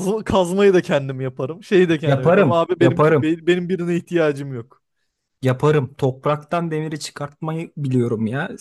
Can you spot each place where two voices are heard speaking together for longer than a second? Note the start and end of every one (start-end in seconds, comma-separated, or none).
2.0-3.3